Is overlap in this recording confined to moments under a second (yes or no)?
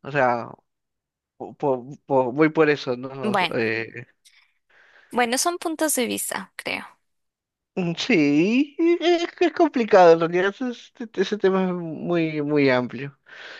yes